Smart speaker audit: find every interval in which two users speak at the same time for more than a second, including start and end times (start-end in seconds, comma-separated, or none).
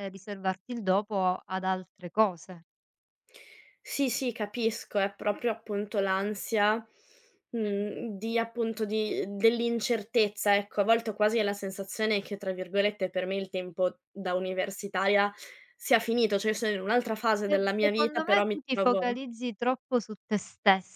17.4-19.1